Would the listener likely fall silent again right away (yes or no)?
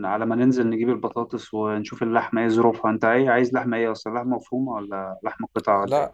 no